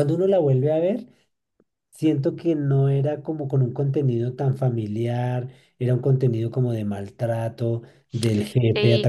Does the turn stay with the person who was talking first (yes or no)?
no